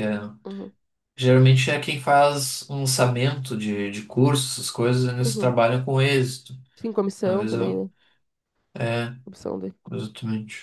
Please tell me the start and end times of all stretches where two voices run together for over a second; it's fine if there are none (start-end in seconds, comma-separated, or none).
none